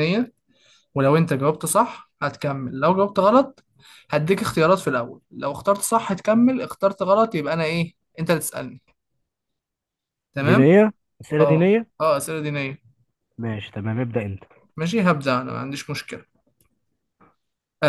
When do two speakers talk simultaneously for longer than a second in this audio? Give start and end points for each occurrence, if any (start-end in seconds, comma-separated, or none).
none